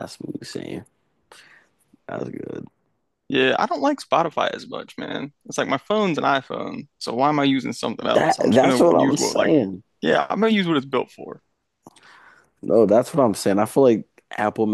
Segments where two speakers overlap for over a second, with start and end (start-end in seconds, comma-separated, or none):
8.1-9.5